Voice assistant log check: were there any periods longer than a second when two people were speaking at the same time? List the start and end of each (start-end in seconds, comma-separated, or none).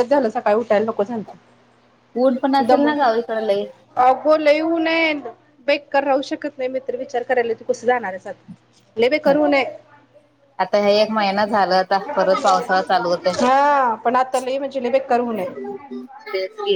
none